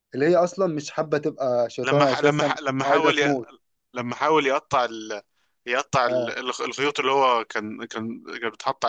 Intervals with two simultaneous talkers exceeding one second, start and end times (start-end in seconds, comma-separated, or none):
1.8-3.3